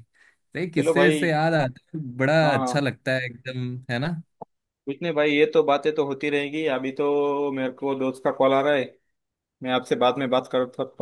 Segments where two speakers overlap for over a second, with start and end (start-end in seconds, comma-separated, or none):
none